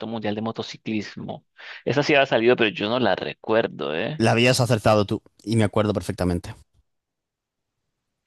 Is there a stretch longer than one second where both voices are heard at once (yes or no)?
no